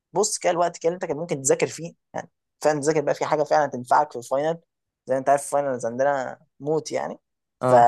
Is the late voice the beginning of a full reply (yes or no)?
no